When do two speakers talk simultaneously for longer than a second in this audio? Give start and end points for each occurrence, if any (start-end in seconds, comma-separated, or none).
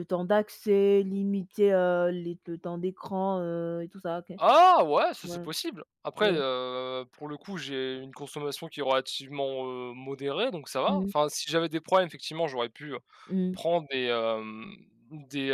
none